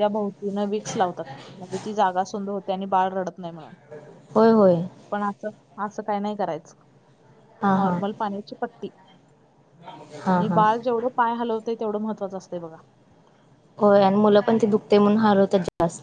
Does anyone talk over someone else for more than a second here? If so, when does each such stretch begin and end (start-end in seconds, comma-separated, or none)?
none